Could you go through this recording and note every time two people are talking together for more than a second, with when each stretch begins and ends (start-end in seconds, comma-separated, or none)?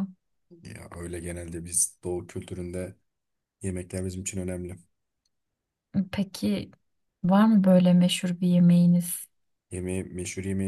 none